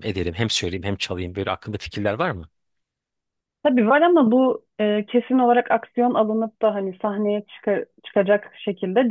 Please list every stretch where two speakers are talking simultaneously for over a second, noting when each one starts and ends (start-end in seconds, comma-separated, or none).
none